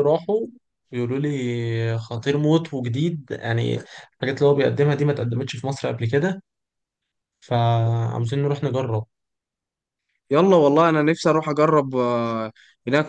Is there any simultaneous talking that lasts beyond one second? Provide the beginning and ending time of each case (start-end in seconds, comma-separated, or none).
none